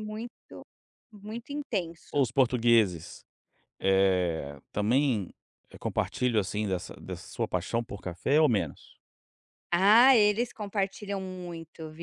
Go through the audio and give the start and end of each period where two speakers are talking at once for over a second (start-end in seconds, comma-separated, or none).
none